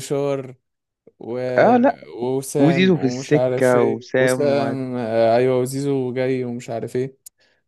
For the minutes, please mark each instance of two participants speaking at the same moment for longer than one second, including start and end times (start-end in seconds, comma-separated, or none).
2.6-4.8